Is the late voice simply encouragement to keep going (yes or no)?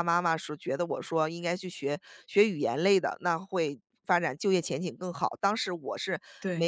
yes